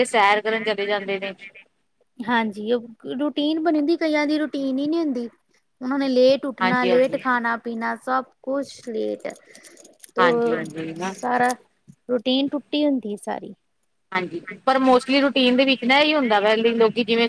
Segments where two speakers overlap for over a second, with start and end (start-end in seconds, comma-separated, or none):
none